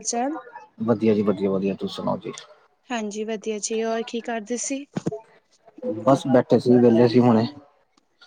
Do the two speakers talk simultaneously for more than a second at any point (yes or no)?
no